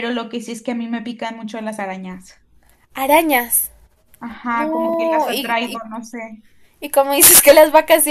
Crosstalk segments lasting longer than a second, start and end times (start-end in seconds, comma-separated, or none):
4.5-5.8